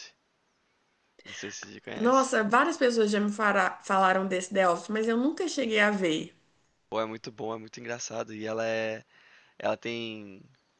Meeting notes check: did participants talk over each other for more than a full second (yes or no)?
no